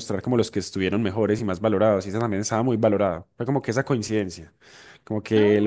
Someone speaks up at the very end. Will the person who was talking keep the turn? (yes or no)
yes